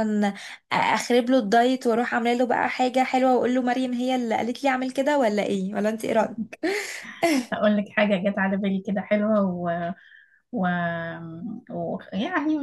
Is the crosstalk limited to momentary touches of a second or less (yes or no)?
yes